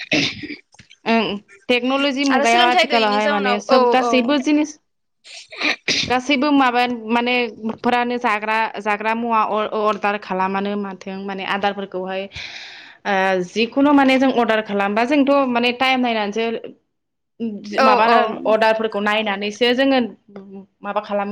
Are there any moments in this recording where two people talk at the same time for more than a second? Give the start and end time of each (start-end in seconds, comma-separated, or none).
2.4-4.5